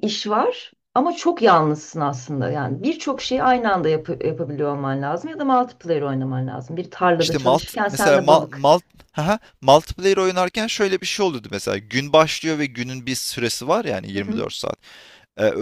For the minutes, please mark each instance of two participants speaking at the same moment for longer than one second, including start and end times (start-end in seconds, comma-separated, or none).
7.2-8.7